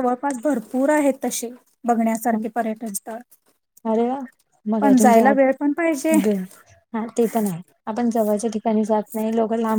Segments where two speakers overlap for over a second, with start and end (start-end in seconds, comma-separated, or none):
4.8-6.1